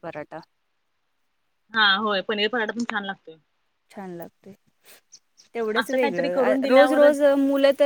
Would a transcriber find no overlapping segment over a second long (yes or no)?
no